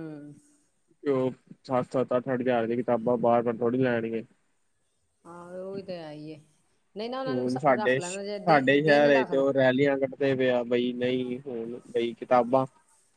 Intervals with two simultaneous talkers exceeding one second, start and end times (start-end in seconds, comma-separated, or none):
none